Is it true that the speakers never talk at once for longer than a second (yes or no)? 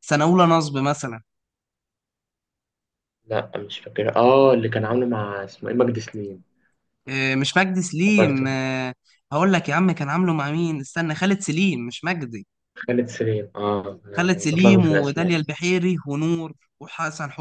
no